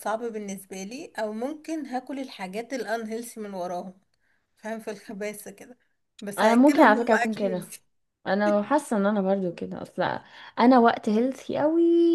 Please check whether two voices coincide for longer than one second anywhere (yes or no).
yes